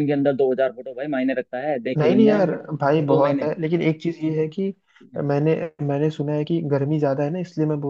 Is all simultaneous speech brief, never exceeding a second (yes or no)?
no